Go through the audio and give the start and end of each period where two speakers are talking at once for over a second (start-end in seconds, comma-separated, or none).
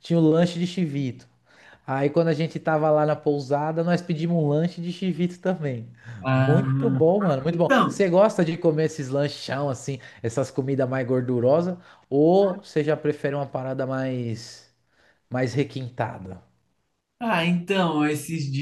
none